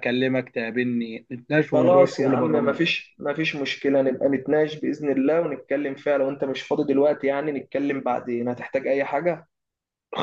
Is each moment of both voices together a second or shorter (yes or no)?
no